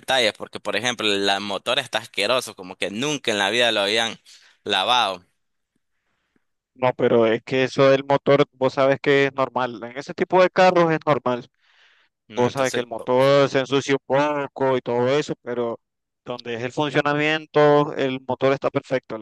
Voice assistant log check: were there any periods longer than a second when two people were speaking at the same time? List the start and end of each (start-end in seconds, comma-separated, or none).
none